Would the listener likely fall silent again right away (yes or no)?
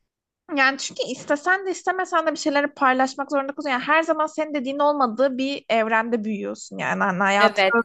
yes